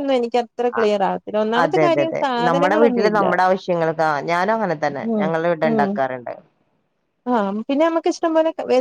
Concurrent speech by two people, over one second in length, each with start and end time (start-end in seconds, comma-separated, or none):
1.6-3.2